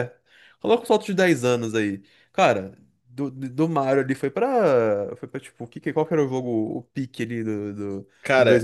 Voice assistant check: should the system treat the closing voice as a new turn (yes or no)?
no